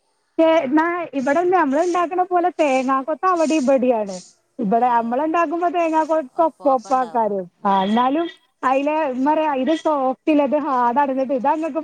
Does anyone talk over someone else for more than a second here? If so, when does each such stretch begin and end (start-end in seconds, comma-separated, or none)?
6.4-8.2